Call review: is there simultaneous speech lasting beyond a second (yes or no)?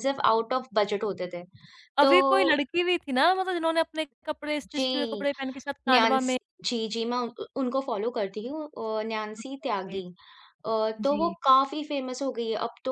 no